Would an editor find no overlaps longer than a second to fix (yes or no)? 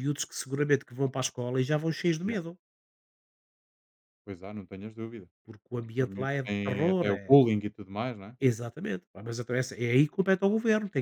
no